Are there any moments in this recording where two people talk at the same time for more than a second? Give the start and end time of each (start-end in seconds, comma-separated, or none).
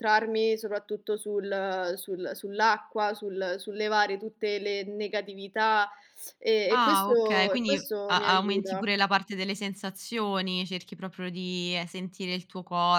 6.7-8.9